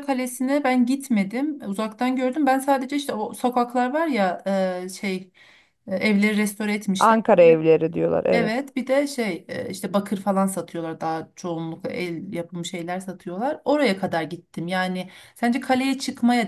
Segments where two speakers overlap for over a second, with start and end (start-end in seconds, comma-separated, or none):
none